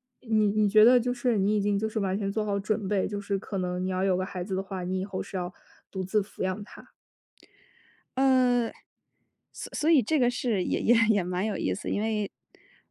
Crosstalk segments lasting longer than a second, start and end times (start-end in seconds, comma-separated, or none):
none